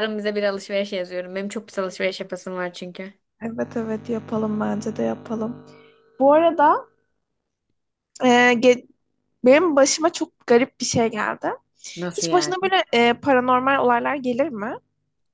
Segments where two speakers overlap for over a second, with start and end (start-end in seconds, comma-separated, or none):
none